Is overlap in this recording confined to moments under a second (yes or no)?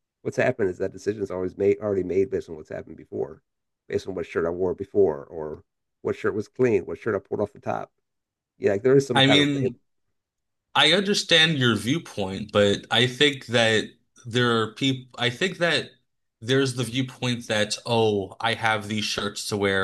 yes